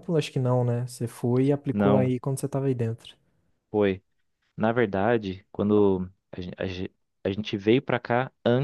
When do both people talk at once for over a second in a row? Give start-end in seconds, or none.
none